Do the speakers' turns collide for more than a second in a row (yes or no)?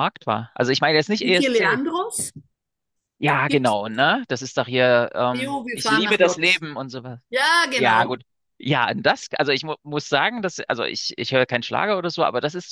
yes